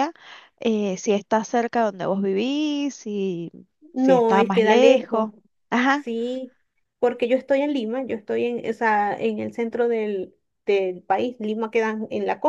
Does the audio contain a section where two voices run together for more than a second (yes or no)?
yes